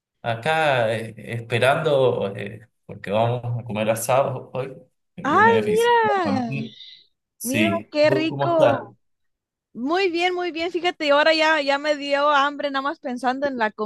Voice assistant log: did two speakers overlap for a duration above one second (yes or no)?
yes